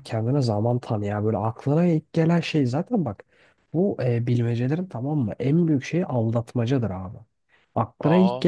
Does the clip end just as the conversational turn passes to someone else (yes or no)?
no